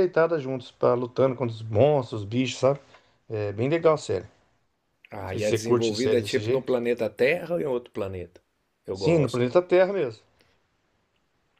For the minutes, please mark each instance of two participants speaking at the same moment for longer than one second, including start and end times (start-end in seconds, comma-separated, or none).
5.3-6.7